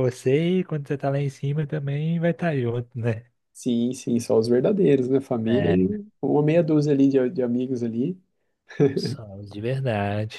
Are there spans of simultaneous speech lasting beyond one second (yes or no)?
no